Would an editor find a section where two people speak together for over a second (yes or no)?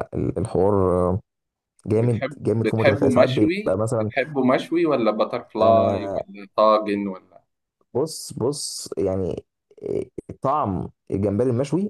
yes